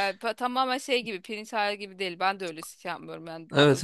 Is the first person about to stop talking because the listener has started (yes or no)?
no